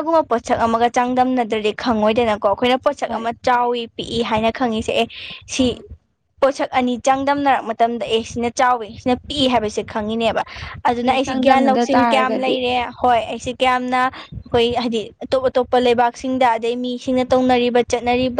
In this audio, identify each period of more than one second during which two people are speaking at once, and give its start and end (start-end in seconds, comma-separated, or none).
11.0-12.5